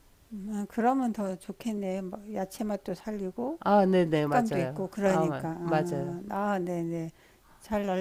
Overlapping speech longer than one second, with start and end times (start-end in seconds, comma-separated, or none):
4.1-6.2